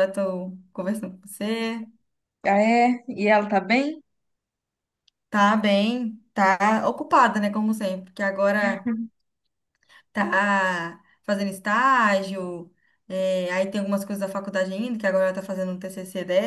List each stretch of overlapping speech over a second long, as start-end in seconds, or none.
none